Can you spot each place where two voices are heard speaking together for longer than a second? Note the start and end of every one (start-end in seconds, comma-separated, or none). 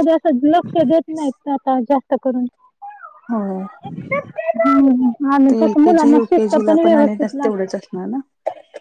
5.6-7.5